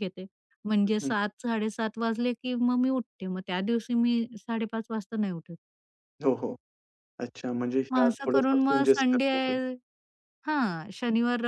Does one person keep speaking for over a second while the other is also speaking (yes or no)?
yes